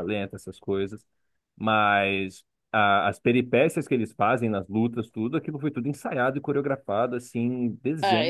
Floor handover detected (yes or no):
yes